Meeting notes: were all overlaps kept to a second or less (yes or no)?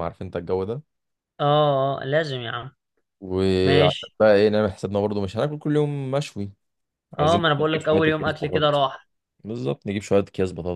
no